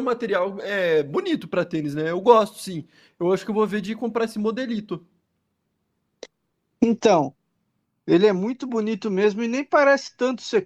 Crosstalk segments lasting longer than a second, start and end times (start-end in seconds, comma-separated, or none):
none